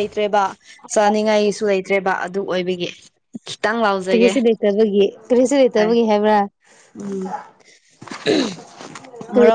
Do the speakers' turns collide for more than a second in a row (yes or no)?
no